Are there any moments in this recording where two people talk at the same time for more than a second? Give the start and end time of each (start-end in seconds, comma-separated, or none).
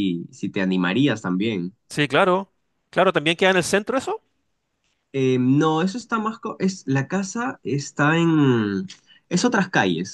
none